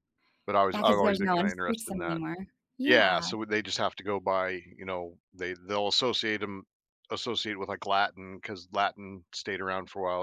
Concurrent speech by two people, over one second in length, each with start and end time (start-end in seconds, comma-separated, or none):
0.7-2.2